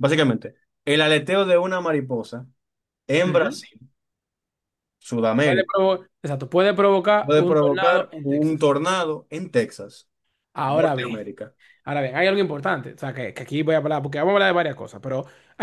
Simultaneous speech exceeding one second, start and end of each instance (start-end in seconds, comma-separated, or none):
7.2-8.7